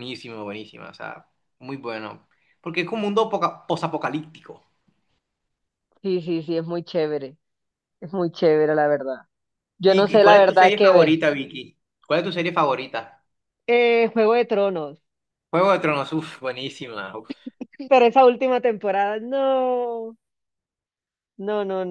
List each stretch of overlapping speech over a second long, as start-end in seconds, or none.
9.8-11.2